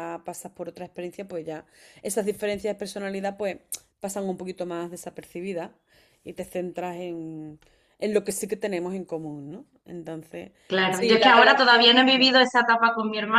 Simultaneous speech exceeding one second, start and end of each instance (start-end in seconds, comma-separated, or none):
10.9-12.3